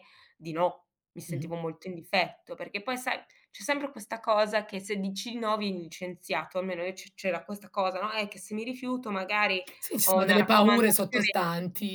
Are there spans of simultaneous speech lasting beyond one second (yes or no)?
yes